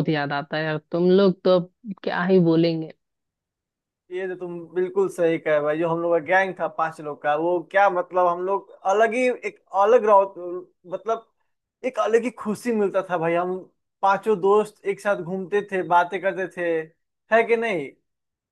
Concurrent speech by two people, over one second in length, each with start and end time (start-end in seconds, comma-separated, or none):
none